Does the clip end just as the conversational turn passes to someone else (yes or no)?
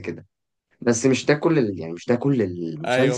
no